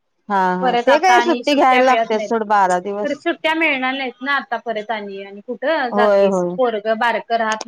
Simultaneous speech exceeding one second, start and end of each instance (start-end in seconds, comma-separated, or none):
0.6-2.3